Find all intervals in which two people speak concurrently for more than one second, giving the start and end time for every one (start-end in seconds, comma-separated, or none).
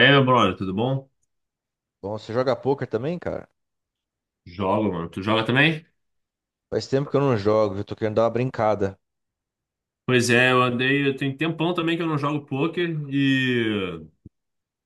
none